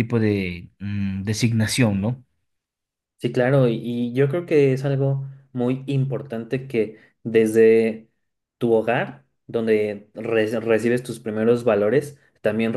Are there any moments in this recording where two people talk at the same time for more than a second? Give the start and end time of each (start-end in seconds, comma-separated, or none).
none